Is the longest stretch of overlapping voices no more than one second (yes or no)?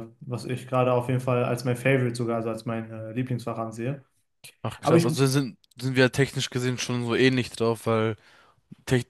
yes